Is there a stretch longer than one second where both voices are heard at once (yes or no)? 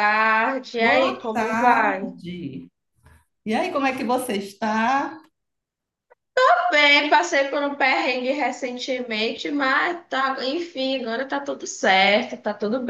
yes